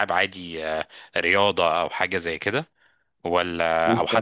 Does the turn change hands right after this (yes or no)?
no